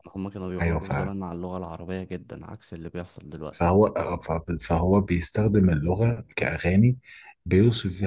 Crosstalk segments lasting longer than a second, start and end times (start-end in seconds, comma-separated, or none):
none